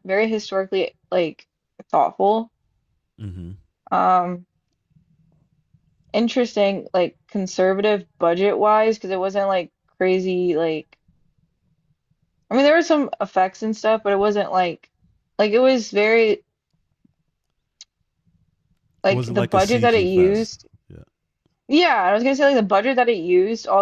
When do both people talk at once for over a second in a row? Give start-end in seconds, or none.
19.1-20.7